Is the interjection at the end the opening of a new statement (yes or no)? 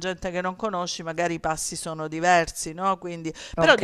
no